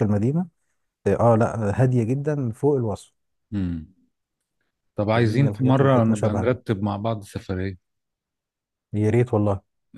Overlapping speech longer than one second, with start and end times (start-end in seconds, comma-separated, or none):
5.1-6.5